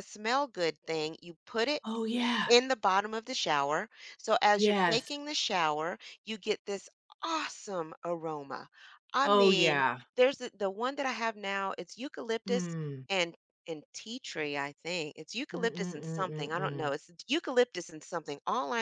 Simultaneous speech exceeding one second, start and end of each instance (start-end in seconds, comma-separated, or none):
15.5-16.9